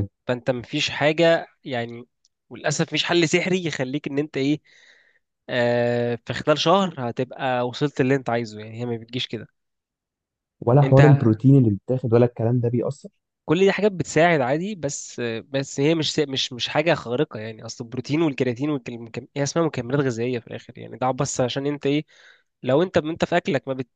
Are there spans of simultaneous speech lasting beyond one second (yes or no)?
no